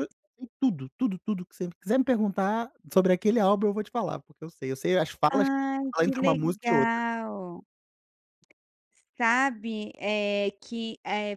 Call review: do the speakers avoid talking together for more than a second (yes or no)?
no